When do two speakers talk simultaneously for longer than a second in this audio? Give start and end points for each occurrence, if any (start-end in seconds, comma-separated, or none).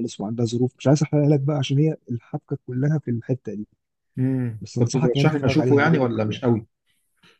4.6-6.5